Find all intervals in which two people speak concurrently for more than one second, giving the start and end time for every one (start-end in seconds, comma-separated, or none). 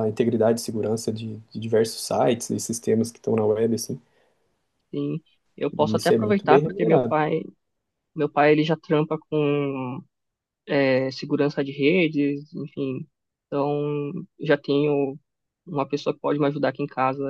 5.8-7.1